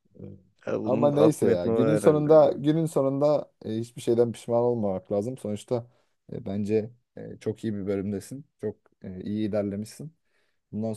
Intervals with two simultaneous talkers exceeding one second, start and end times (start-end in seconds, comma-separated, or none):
0.8-2.6